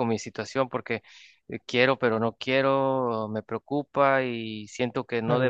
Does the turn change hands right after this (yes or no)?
no